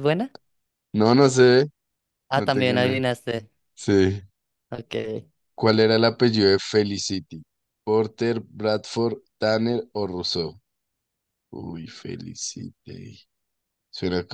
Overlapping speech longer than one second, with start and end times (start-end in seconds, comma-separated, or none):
none